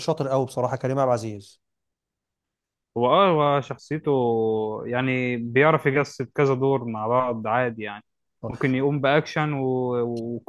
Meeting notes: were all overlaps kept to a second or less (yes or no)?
yes